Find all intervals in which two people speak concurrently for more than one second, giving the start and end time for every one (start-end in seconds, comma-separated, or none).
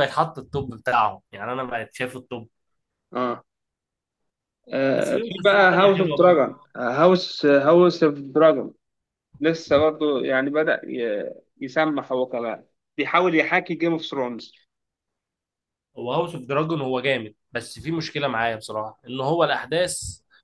5.0-6.4